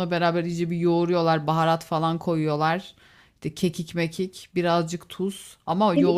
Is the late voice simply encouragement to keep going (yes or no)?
no